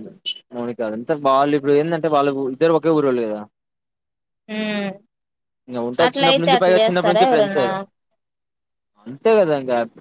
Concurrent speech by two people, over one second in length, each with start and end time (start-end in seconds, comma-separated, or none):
6.1-7.7